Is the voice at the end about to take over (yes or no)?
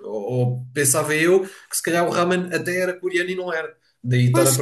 yes